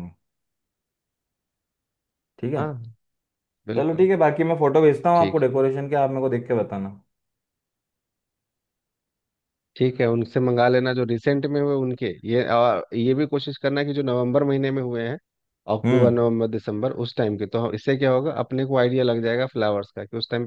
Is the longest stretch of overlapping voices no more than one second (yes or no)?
yes